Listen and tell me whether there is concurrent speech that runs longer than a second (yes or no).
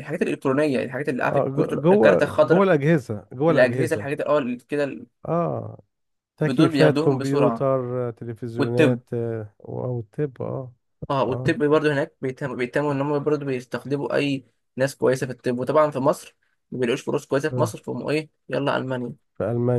yes